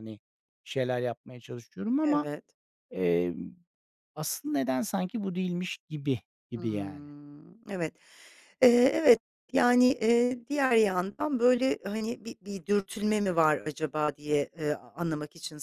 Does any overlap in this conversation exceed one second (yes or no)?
no